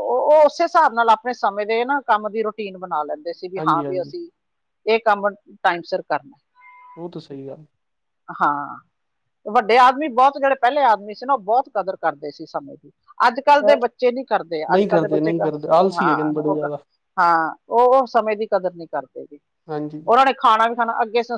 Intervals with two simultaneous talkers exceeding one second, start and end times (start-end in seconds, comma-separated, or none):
14.7-16.7